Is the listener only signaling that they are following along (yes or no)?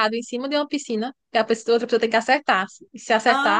no